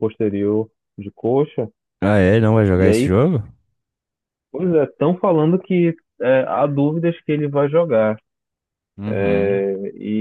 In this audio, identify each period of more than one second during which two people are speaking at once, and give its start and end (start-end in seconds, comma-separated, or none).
none